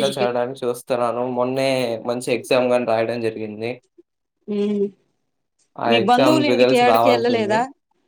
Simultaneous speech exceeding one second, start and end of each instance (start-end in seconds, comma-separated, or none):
5.9-7.6